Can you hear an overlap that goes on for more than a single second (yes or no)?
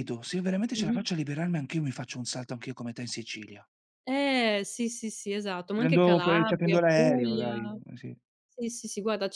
yes